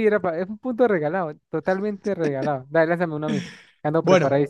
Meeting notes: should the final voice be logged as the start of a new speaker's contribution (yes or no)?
yes